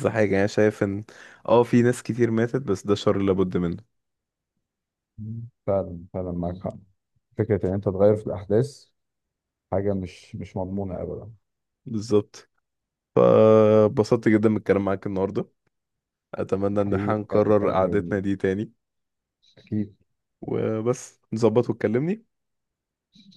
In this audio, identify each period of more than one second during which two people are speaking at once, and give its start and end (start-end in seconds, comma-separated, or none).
16.7-18.2